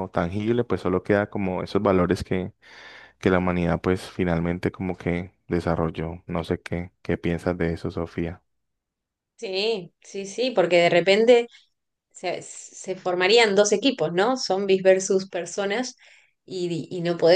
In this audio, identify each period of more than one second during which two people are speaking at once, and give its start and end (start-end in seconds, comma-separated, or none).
none